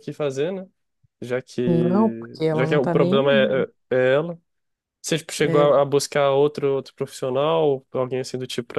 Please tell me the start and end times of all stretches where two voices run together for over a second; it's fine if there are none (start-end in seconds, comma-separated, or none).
1.6-3.7